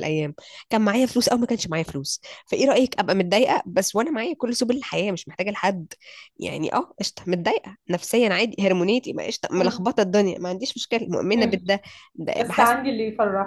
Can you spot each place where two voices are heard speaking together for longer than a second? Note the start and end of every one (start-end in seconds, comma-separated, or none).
none